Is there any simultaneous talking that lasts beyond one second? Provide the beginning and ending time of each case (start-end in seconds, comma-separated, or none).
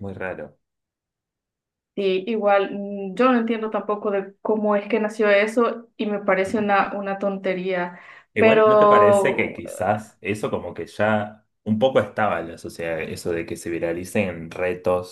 8.4-9.6